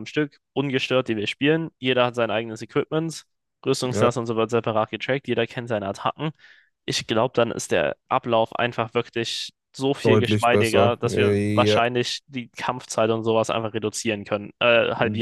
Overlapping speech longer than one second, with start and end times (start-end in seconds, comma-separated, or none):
10.0-11.8